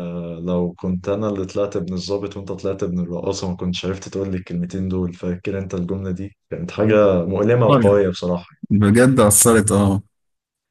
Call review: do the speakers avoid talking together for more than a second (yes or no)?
yes